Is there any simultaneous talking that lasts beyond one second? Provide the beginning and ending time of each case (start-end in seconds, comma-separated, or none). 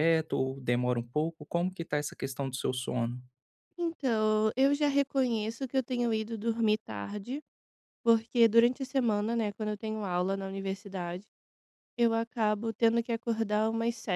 none